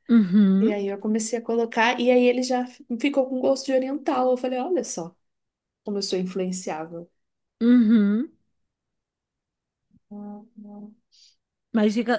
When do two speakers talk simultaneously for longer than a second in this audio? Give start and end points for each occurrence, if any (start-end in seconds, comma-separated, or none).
none